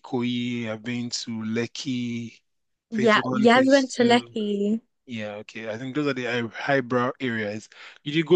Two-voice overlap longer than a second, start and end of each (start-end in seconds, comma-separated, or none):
2.9-4.4